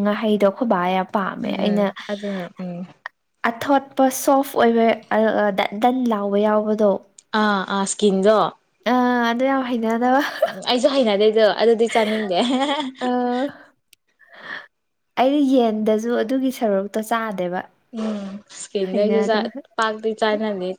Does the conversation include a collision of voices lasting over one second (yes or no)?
no